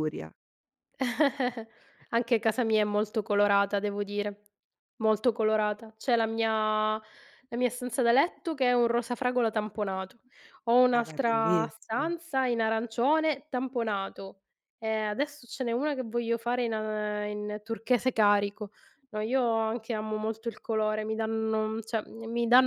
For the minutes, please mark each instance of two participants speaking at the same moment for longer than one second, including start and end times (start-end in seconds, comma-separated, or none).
10.9-12.2